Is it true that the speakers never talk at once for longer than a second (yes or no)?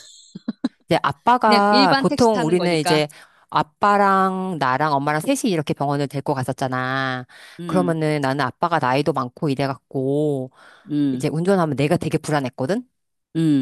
no